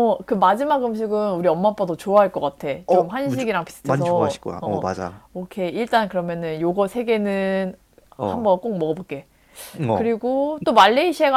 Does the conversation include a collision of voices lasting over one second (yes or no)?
yes